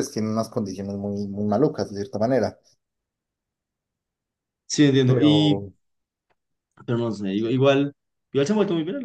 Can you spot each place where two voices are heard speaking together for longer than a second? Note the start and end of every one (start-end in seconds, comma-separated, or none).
none